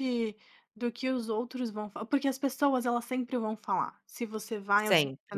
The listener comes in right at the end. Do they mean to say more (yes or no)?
no